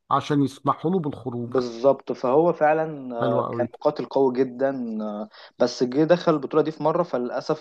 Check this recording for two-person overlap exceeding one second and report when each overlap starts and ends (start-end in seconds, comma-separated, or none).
none